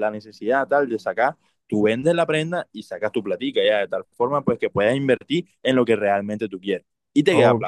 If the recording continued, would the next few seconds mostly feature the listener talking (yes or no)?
yes